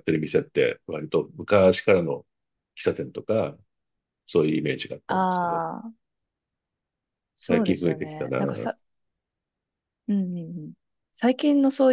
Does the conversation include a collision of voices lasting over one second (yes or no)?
yes